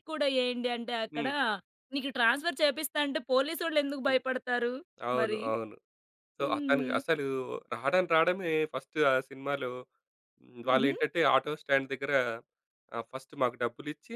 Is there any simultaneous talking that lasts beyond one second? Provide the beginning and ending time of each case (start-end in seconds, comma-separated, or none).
none